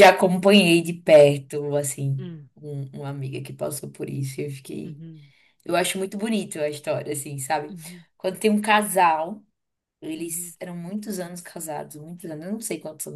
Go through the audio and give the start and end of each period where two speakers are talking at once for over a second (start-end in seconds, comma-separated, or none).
none